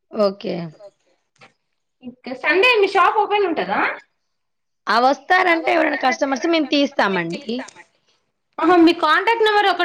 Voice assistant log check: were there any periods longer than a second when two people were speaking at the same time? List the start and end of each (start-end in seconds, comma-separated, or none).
5.5-7.4